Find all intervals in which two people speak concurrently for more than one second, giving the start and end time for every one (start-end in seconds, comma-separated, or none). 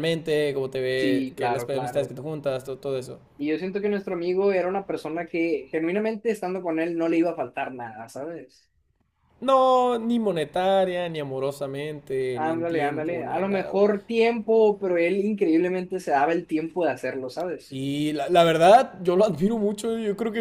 0.9-2.1, 12.3-13.8